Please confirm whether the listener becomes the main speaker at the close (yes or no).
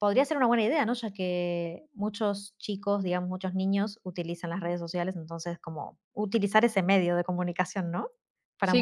yes